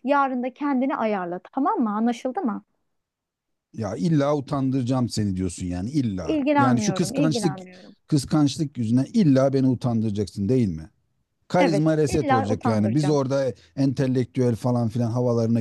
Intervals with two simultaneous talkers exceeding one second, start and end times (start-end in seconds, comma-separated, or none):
6.2-7.6, 11.6-13.2